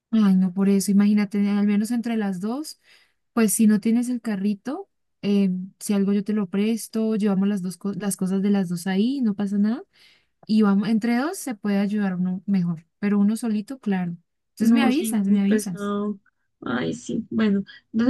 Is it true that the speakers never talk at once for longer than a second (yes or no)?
no